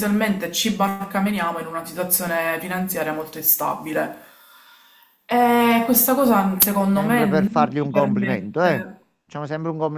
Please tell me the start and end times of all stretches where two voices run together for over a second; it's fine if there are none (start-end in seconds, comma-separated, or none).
6.9-8.9